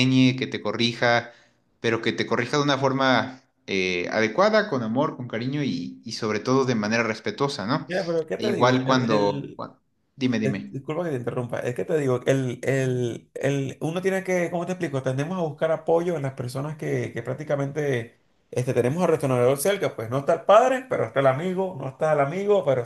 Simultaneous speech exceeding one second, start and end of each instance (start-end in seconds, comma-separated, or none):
8.4-9.6